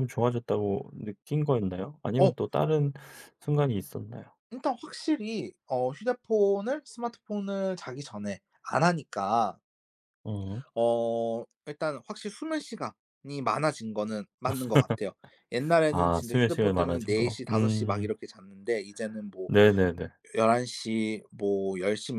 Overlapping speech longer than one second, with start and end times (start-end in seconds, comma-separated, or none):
15.9-18.1